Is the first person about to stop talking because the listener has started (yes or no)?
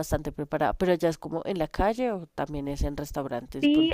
yes